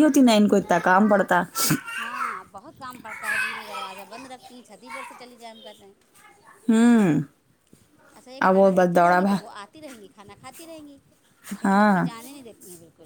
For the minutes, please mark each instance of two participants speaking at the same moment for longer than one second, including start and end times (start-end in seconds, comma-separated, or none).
none